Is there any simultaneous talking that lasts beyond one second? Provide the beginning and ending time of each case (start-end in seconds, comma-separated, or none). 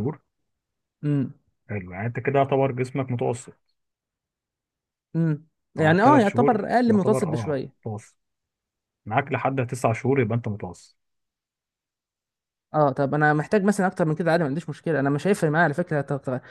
5.8-7.7